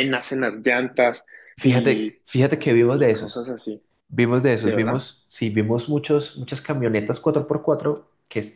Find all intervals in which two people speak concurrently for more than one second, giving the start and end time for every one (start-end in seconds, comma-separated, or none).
none